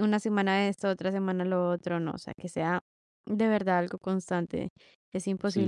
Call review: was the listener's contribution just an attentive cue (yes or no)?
no